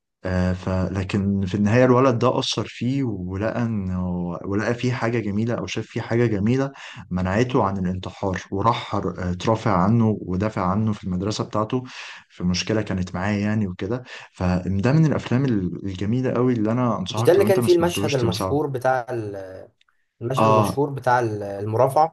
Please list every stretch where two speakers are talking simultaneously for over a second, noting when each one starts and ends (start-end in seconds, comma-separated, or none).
17.1-18.6